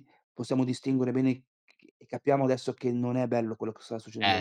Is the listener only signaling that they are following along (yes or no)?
no